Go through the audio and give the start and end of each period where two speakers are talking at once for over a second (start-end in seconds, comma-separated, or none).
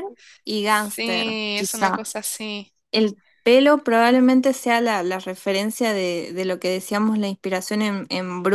0.6-2.0